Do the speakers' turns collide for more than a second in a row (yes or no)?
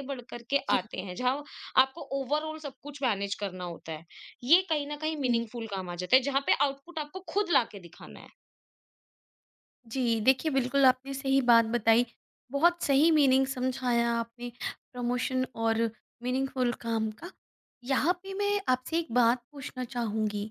no